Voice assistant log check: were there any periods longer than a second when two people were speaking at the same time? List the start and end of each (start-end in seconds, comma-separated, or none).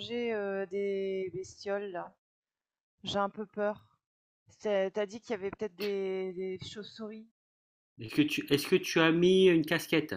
none